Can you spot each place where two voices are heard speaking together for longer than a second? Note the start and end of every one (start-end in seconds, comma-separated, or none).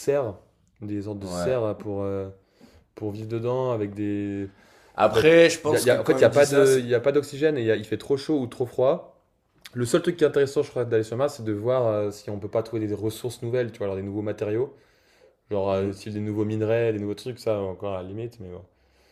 5.0-6.8